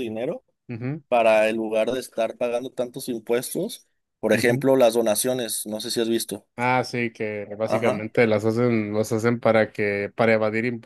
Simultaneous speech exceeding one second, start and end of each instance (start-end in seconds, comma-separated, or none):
none